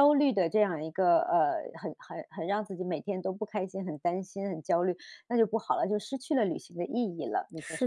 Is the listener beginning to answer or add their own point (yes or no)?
yes